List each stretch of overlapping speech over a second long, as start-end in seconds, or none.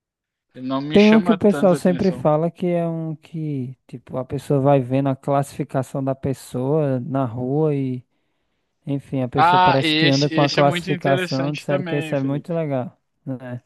0.9-2.2, 9.3-12.6